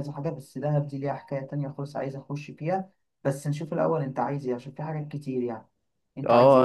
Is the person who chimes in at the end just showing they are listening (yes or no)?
no